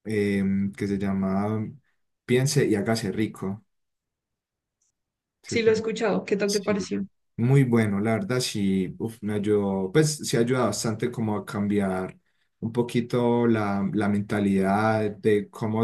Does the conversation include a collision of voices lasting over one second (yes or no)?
no